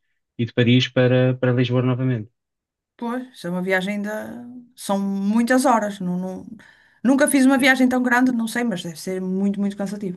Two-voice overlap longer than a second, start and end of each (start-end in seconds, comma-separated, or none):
none